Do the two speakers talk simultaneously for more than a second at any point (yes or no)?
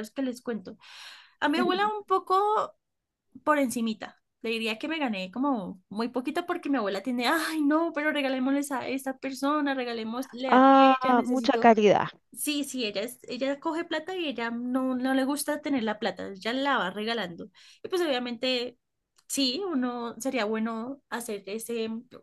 yes